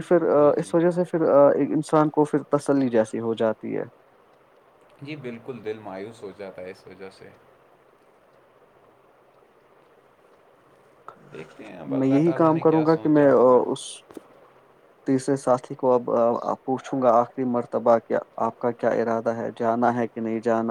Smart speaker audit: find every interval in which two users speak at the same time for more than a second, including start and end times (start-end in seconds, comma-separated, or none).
12.0-13.6